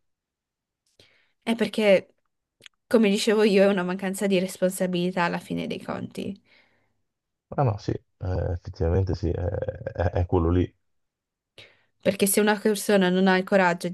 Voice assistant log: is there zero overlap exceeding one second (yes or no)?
yes